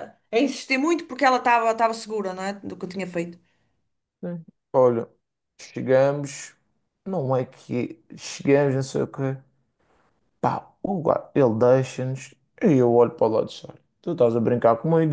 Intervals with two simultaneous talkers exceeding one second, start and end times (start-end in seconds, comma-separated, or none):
none